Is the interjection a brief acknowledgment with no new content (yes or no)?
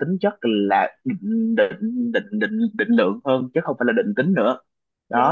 no